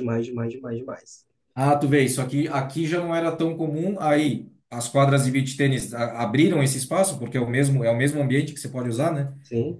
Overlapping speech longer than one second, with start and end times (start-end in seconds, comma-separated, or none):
none